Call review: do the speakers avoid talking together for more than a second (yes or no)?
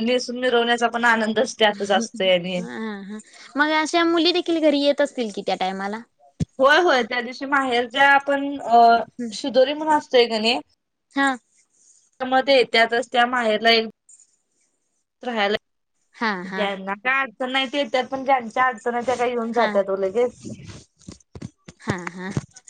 yes